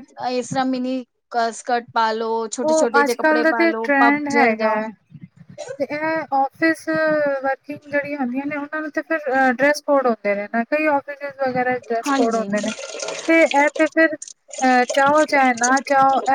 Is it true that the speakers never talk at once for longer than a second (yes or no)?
no